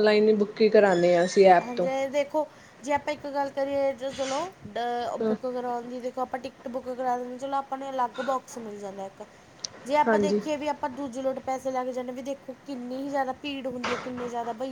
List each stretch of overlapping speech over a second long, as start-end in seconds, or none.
none